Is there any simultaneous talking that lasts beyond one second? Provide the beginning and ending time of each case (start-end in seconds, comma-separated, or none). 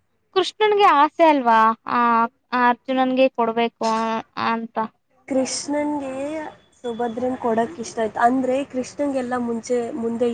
none